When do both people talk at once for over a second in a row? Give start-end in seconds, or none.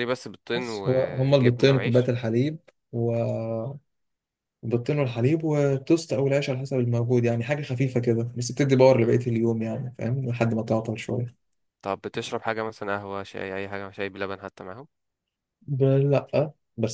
0.5-2.1